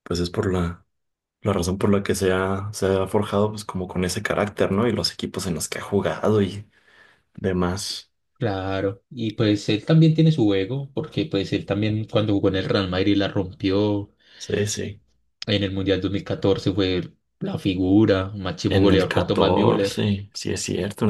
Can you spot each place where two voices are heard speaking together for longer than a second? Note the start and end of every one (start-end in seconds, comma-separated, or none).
18.7-20.0